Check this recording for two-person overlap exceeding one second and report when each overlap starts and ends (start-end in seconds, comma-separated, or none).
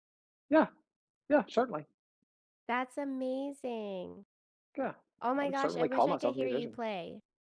5.4-6.8